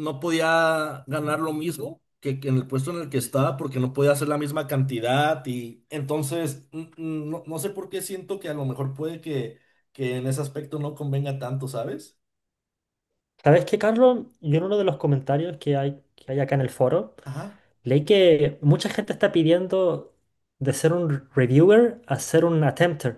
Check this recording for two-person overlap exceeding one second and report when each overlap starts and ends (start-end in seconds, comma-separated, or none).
none